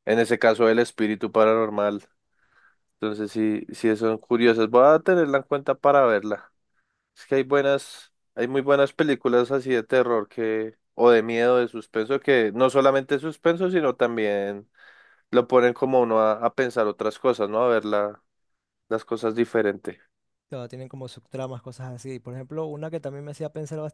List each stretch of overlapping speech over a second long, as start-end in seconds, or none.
none